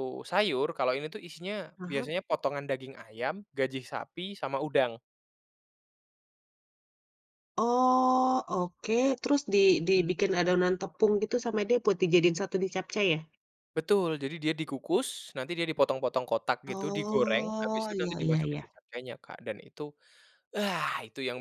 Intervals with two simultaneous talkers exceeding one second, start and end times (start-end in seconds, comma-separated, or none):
16.7-18.7